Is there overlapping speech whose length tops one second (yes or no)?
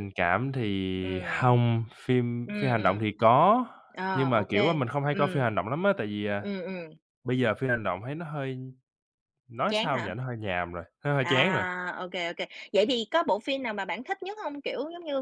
yes